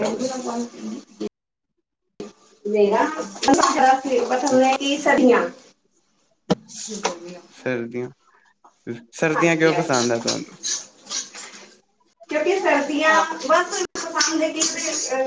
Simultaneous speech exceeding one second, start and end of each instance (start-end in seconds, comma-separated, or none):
none